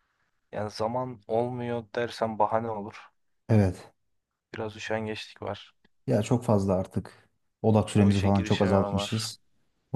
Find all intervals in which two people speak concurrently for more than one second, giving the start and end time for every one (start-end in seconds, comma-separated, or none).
8.0-9.3